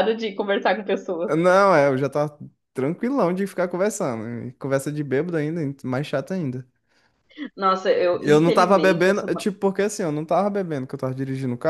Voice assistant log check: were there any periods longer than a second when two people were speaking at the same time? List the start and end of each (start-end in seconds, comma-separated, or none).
8.2-9.5